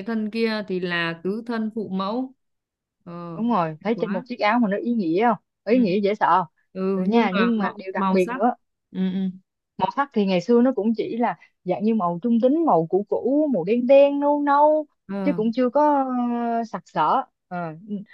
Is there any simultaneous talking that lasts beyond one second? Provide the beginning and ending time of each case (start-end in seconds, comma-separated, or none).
6.9-8.4